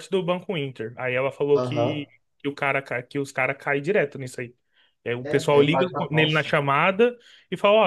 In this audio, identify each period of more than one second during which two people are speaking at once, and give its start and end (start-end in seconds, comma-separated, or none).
5.2-6.5